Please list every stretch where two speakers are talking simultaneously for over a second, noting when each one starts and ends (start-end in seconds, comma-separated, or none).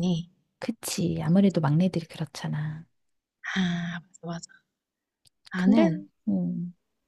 none